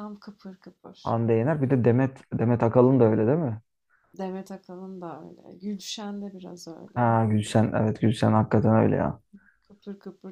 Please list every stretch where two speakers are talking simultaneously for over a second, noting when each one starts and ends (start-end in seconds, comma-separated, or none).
none